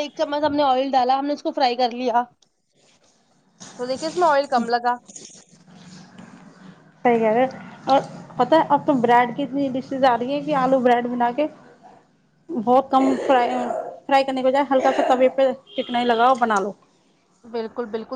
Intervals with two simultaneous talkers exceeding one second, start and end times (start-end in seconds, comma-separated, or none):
none